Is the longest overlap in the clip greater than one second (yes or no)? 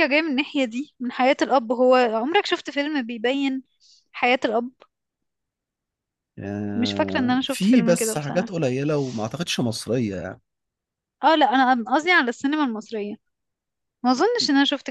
yes